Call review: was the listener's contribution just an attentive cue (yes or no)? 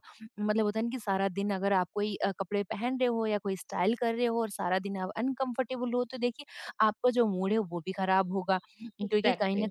yes